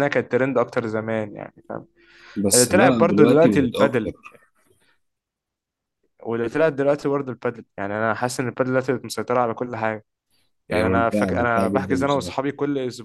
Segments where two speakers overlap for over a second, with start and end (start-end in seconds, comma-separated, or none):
2.5-4.1, 10.7-12.3